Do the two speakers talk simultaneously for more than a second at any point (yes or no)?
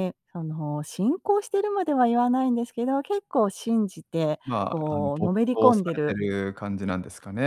yes